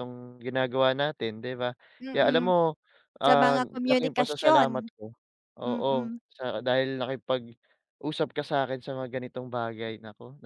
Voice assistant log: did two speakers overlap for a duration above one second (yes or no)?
yes